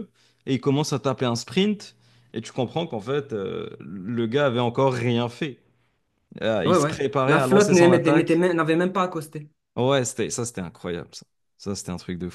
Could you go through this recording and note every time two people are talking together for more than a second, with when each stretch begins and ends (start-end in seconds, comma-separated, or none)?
6.7-8.4